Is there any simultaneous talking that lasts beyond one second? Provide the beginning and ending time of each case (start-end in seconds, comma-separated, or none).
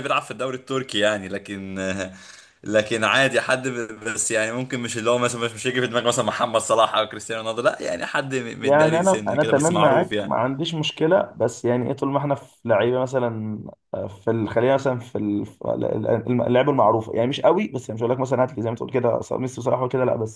8.6-10.3